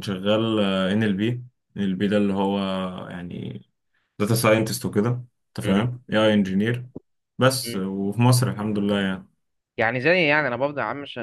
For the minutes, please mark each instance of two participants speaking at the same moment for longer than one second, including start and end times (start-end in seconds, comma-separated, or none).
none